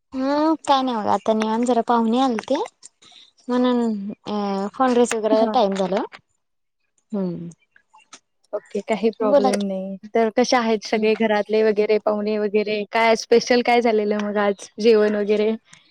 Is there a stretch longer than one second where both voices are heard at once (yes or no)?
no